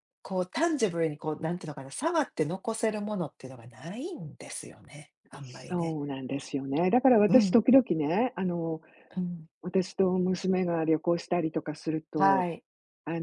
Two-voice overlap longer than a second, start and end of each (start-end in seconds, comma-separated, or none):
none